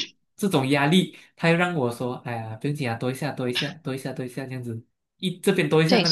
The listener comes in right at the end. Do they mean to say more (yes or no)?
no